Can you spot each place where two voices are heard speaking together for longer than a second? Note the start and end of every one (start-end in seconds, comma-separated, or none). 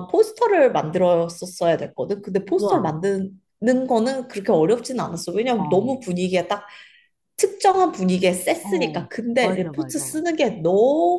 8.6-10.2